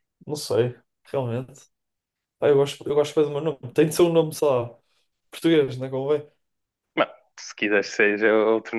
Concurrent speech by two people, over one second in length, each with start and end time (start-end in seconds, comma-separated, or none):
none